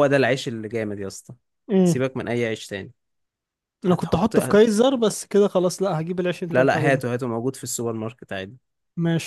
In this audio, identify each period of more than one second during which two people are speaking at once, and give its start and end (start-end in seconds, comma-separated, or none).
none